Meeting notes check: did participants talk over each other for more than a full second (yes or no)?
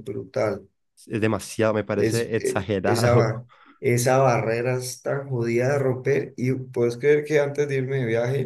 yes